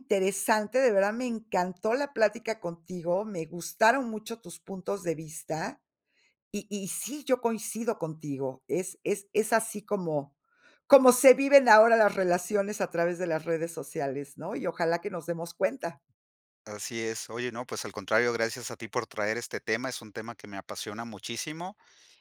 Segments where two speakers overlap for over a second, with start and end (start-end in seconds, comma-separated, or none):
none